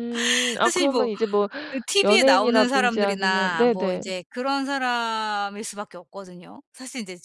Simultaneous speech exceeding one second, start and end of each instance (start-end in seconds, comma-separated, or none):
2.0-4.0